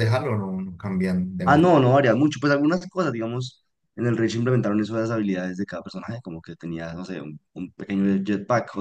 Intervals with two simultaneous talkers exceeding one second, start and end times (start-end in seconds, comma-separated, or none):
none